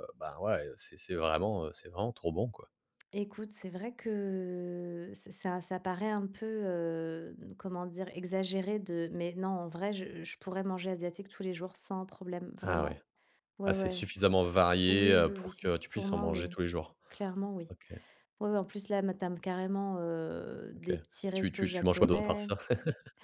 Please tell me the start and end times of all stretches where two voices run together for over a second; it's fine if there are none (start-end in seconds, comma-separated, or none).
14.8-16.6, 20.8-22.5